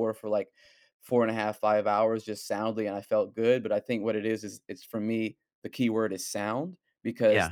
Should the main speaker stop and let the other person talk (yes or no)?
no